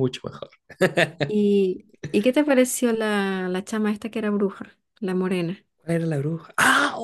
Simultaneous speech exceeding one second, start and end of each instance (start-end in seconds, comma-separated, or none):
none